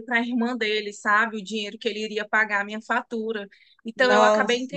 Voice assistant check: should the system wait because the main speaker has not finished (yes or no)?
yes